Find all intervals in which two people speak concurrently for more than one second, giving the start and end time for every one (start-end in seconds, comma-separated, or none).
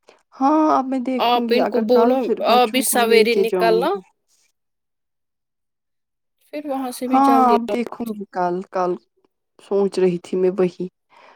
1.8-4.0